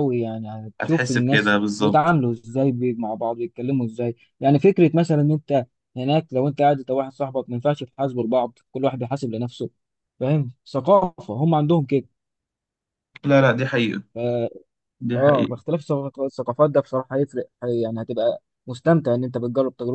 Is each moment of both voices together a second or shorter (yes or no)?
no